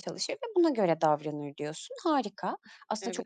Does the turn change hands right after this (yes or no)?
no